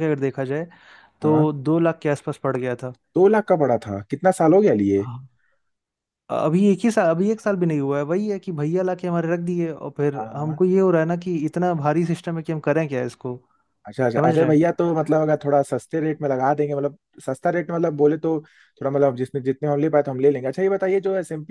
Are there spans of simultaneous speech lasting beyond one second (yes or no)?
no